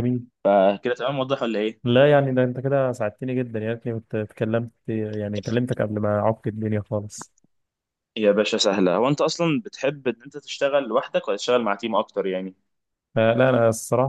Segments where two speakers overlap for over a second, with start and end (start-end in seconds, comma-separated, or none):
none